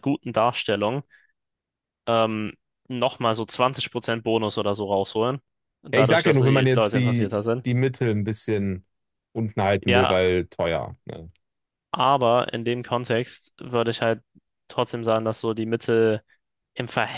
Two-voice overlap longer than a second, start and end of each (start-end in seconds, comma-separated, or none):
5.9-7.6